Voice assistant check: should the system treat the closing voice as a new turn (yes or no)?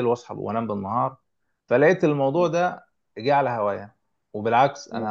no